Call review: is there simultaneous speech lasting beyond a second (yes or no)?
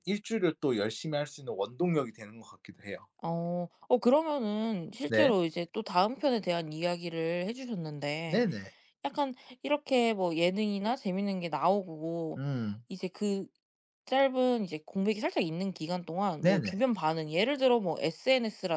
no